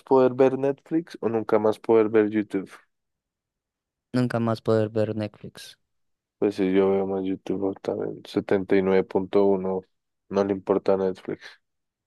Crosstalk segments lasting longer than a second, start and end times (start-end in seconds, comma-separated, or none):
none